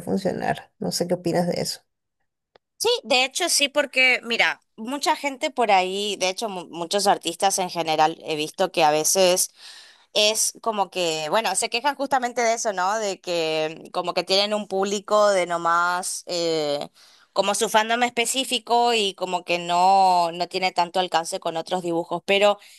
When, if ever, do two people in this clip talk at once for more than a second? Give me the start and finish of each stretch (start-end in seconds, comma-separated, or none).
none